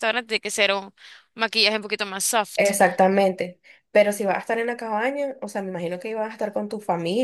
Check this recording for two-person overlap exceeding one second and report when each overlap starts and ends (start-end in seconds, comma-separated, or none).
none